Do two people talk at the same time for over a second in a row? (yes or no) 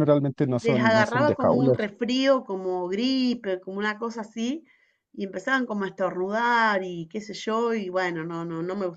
yes